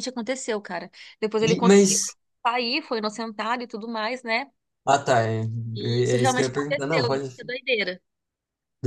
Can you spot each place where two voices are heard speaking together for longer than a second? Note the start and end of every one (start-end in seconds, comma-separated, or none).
5.8-7.3